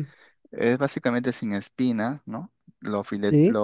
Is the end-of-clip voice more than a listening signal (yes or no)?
no